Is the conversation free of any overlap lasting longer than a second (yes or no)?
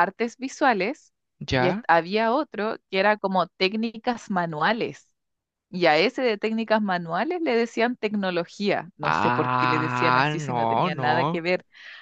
no